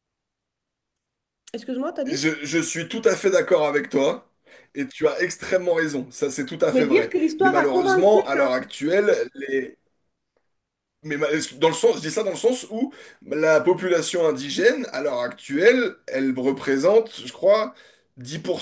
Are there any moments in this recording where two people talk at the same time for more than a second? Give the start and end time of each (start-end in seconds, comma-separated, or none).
6.7-8.5